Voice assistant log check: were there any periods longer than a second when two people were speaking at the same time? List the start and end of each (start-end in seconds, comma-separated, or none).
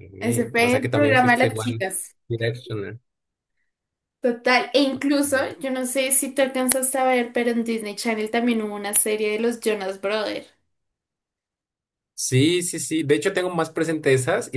0.6-1.8